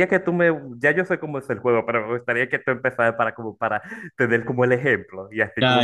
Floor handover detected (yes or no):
yes